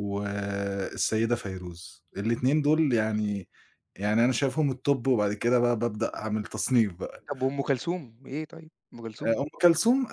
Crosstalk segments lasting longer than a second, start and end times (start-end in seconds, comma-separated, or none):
none